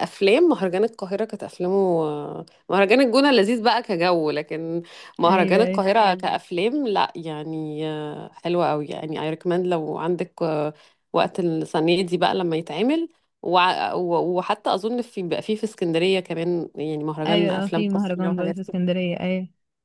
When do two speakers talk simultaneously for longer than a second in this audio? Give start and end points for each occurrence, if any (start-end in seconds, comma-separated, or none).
17.2-18.6